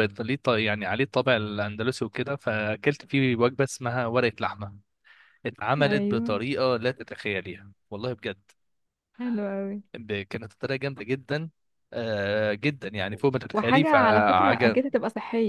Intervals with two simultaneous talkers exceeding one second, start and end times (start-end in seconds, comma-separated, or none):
13.5-14.8